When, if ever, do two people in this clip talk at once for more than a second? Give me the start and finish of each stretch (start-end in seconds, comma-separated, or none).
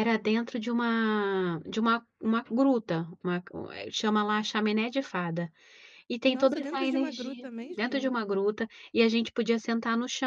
6.3-8.2